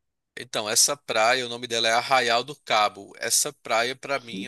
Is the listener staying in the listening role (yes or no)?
yes